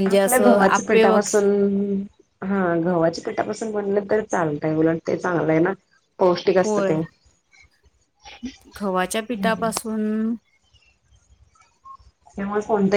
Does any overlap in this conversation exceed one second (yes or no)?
no